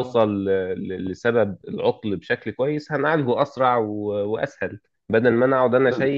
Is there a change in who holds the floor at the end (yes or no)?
no